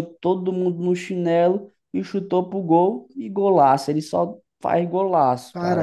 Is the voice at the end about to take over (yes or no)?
yes